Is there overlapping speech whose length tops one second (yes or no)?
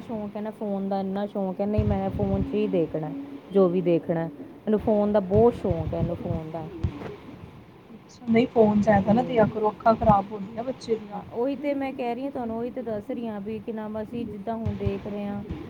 no